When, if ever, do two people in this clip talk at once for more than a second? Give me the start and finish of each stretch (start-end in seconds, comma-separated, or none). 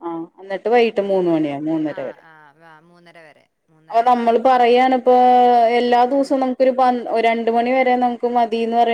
none